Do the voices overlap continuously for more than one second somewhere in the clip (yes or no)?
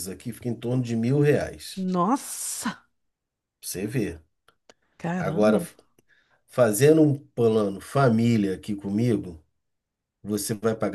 no